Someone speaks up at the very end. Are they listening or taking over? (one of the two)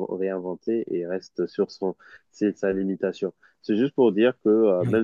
listening